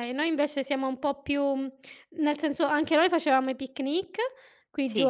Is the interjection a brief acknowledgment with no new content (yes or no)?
yes